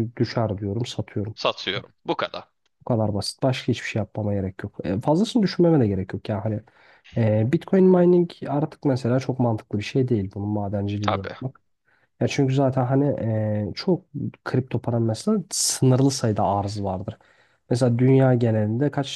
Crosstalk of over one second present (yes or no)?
no